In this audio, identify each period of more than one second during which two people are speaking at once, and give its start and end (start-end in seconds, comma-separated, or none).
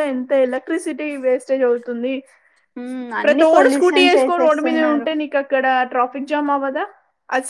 3.2-5.1